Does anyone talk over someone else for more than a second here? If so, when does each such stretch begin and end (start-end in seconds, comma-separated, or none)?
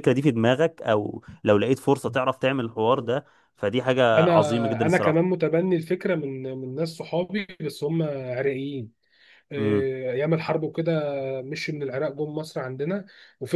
4.2-5.4